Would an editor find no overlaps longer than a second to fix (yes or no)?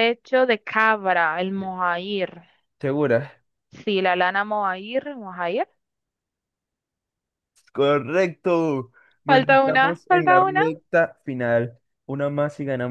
no